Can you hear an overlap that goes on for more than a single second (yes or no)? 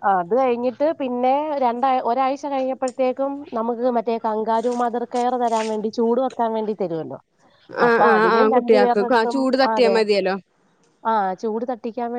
yes